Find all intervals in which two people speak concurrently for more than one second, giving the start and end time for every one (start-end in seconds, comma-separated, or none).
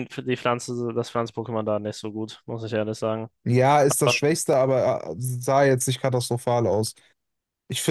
none